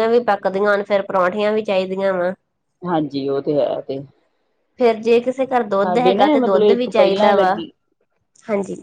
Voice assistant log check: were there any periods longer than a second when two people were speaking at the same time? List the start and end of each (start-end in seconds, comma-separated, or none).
5.7-7.5